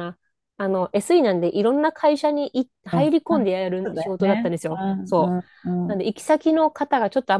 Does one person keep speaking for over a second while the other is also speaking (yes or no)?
yes